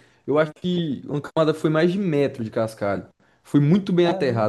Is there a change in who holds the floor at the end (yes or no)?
no